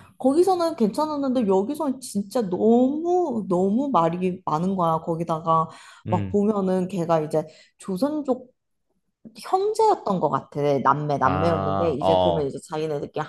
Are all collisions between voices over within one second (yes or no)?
no